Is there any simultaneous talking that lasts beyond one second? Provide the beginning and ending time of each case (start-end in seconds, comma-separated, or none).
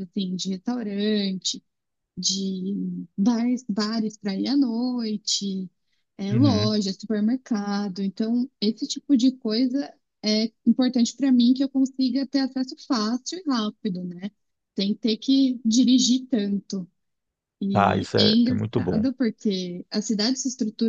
17.7-19.1